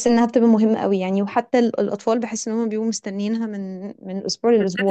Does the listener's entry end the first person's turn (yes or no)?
yes